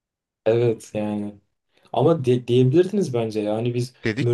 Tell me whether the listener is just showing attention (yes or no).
yes